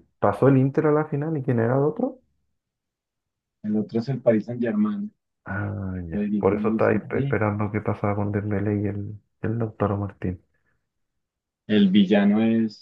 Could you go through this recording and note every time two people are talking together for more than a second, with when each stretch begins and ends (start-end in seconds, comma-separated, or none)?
6.1-7.6